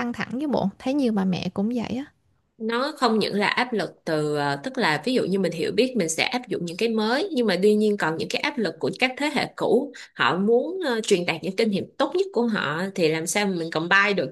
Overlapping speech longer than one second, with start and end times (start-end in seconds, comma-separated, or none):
none